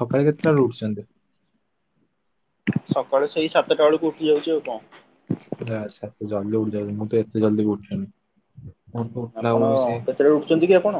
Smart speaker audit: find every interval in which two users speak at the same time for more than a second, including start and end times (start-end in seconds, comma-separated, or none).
none